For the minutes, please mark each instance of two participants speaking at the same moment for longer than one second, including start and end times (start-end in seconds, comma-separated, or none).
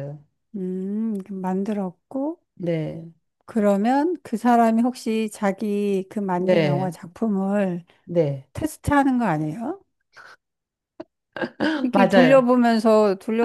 none